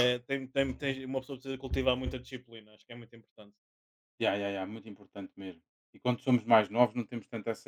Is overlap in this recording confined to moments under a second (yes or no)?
yes